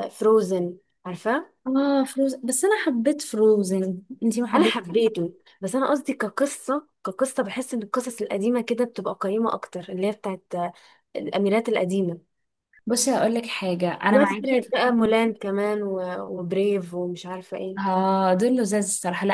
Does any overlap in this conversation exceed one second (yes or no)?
yes